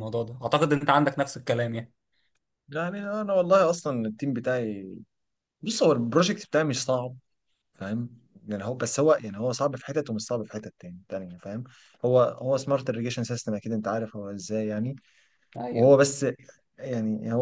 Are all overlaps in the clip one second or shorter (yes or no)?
yes